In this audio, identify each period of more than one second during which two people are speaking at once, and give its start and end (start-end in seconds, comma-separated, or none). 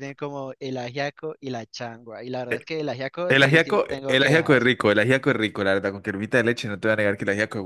3.3-4.7